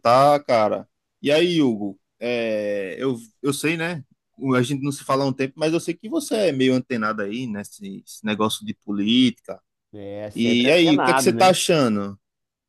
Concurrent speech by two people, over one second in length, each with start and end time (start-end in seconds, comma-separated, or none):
10.3-11.6